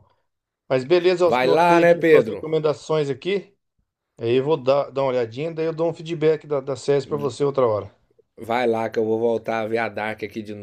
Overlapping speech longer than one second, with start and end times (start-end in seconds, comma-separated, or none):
1.2-2.5